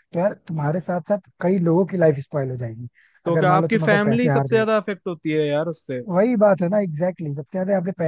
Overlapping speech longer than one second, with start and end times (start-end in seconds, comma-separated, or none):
3.3-4.6